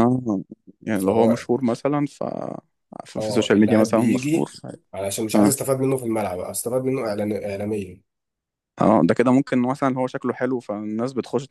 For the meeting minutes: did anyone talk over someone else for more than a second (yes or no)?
yes